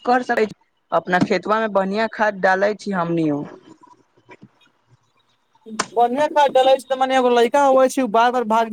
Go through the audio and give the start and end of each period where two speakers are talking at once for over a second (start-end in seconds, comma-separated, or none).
none